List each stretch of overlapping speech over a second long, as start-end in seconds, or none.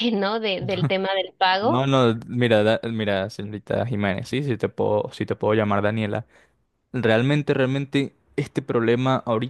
none